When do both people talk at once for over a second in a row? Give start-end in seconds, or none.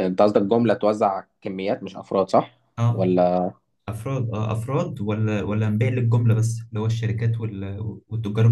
none